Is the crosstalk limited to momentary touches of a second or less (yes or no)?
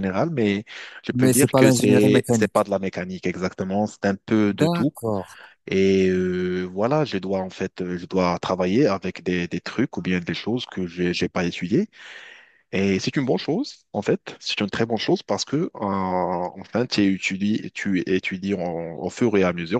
no